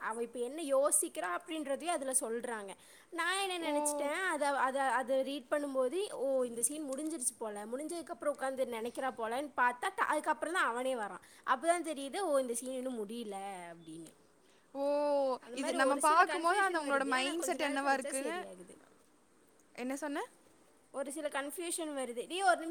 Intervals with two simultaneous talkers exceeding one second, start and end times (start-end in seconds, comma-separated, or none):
16.3-18.4